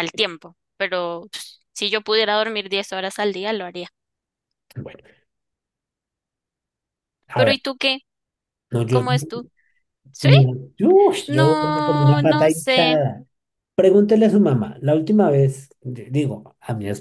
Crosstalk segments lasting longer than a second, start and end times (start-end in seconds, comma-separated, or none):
11.3-13.0